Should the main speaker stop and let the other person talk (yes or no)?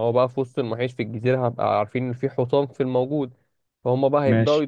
no